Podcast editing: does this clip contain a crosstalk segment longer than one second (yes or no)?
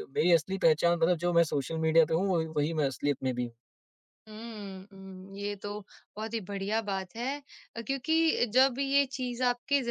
no